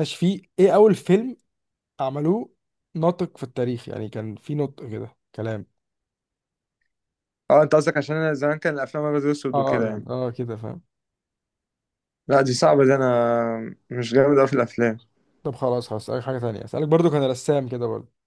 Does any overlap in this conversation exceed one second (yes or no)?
no